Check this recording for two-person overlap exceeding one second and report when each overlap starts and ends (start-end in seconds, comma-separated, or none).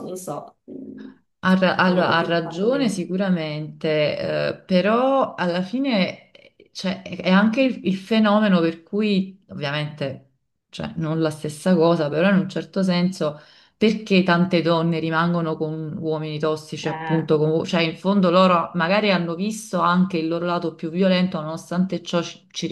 1.8-3.0